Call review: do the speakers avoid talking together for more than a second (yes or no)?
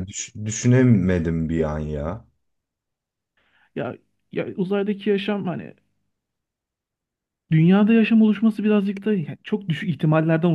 yes